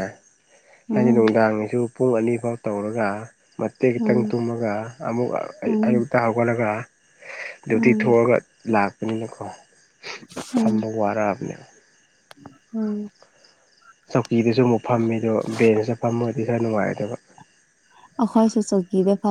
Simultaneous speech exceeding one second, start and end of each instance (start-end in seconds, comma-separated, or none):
none